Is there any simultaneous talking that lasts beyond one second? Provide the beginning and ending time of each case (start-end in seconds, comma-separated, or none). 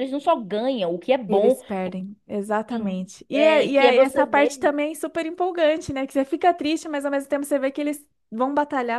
2.7-4.7